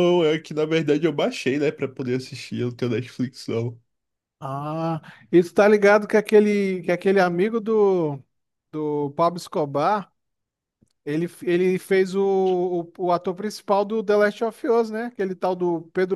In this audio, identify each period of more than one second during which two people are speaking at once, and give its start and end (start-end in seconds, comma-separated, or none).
none